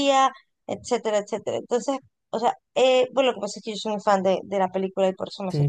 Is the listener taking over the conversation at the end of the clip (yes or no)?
yes